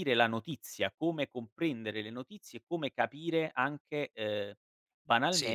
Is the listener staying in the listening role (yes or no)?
yes